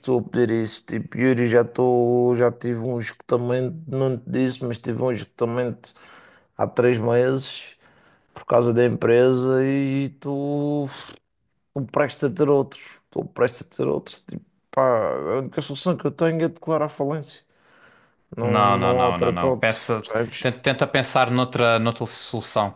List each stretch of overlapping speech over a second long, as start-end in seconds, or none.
18.4-20.5